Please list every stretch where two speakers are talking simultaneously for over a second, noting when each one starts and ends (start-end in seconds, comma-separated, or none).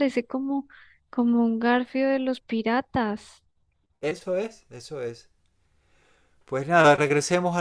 none